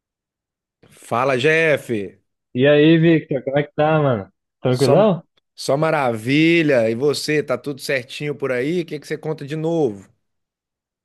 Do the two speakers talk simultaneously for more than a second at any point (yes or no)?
no